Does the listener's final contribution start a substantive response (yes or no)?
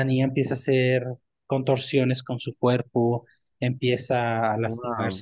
no